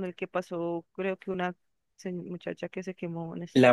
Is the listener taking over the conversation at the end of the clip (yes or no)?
yes